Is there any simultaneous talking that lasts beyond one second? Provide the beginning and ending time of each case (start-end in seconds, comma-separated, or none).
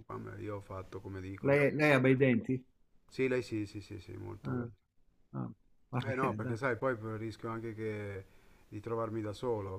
none